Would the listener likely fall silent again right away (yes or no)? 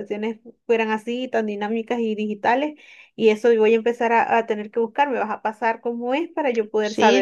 no